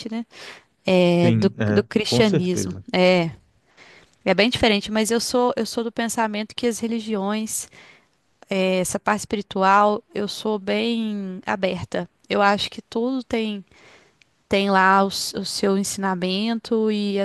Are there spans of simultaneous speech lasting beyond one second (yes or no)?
yes